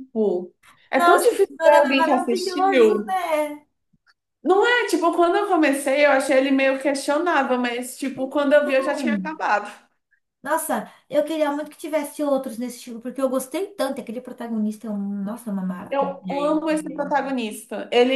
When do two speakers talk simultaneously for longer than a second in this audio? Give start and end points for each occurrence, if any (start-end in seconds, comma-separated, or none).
0.9-3.2, 15.9-17.3